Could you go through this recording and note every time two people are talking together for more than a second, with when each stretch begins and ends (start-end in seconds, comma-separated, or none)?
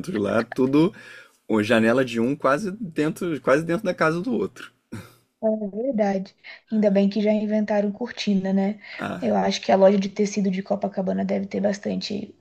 none